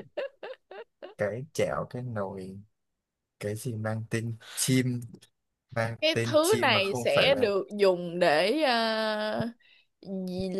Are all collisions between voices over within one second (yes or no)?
no